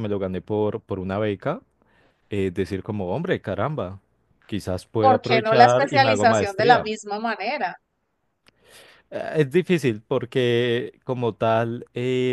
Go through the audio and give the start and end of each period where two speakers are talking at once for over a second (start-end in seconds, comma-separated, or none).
5.0-6.9